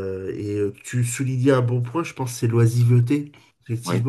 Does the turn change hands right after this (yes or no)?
no